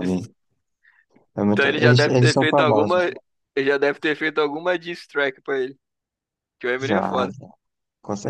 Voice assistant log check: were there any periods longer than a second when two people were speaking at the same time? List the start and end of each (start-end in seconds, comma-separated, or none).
1.5-3.0